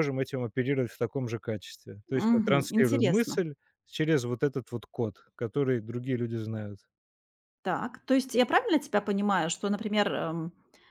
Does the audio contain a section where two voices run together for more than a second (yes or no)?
yes